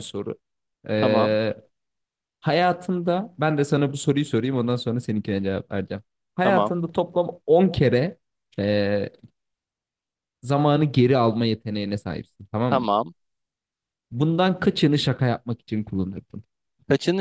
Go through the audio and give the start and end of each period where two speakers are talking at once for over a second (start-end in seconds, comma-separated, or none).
none